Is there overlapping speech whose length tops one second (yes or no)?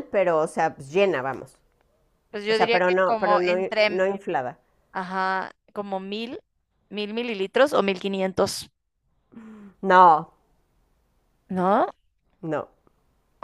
yes